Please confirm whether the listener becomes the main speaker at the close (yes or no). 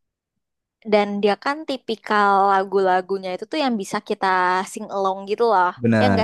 yes